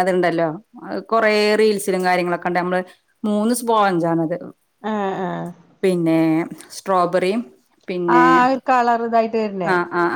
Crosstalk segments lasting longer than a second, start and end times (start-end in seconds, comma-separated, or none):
none